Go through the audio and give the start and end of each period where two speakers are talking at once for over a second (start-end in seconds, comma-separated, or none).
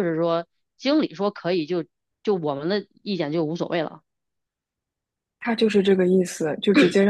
none